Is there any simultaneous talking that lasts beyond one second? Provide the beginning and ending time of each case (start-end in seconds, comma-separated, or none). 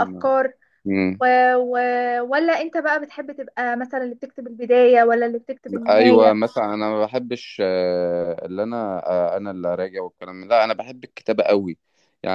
none